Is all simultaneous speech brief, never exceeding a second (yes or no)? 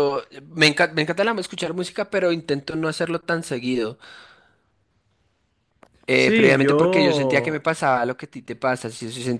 no